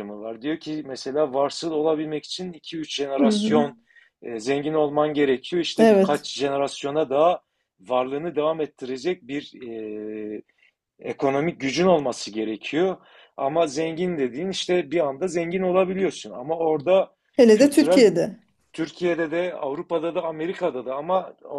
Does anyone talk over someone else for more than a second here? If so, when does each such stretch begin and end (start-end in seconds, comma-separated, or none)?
none